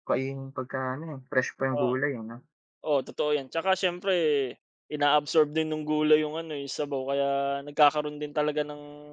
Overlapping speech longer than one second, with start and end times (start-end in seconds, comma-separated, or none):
none